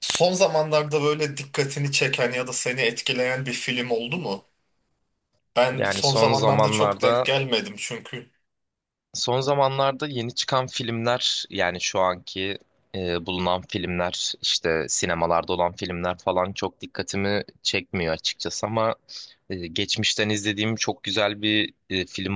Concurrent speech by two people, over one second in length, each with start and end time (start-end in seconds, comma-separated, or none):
5.8-7.3